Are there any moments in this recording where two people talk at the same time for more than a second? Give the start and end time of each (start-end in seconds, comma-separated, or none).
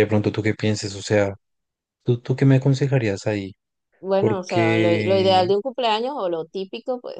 4.2-5.5